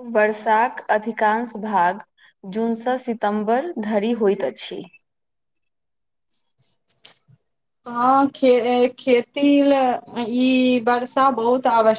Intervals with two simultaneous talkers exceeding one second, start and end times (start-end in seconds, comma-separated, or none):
none